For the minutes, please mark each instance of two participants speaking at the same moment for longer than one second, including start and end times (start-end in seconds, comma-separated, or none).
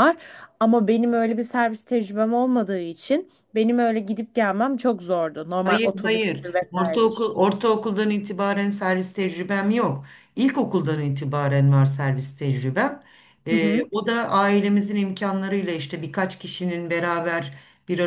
5.6-7.3